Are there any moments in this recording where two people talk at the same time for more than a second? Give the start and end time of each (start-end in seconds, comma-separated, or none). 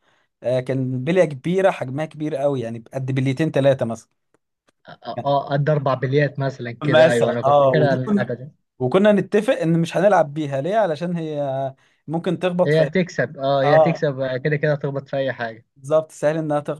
6.8-8.3